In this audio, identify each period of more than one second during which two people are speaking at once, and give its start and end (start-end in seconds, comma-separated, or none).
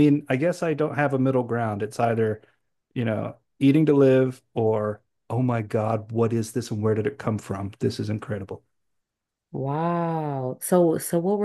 none